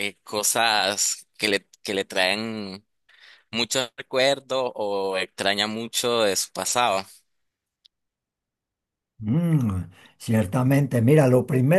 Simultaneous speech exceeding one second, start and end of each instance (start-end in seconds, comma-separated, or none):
none